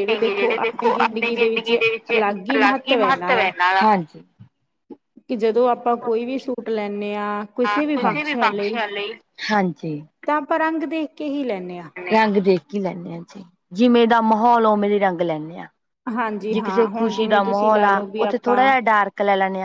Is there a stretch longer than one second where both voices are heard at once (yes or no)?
yes